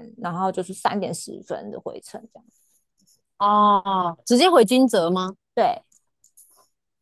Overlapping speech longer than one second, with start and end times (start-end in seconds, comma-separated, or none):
none